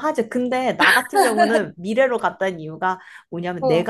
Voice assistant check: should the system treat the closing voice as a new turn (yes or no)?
no